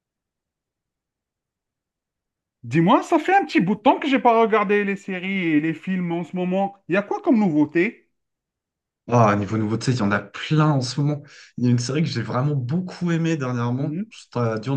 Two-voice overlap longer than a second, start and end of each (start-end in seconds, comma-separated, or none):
none